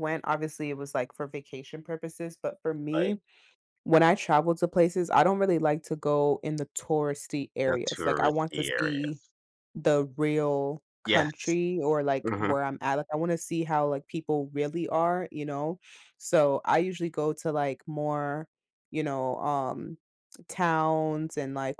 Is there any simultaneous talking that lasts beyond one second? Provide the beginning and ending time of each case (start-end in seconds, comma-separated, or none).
7.7-9.2